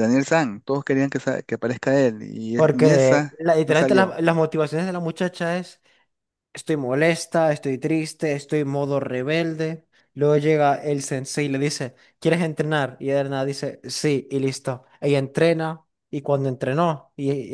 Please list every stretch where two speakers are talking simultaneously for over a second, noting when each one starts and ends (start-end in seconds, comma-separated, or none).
2.5-4.2